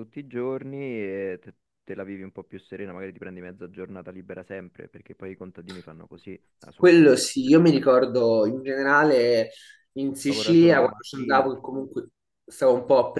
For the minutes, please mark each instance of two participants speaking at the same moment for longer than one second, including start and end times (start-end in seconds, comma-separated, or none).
6.7-8.0, 10.3-11.5